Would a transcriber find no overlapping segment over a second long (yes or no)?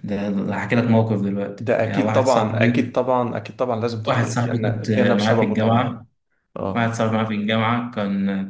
no